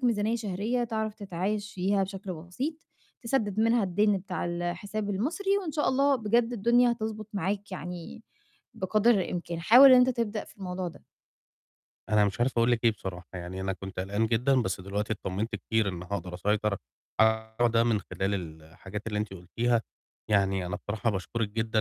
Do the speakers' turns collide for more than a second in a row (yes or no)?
no